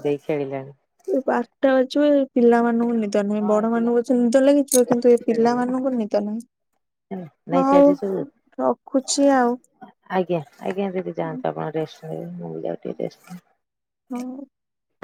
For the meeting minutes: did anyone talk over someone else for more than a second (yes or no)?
yes